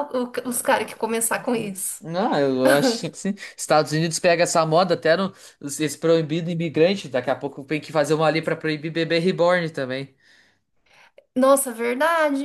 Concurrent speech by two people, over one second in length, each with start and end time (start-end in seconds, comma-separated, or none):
none